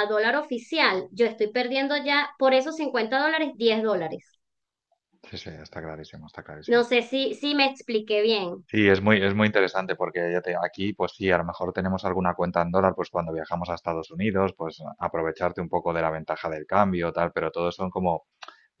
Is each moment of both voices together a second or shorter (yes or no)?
yes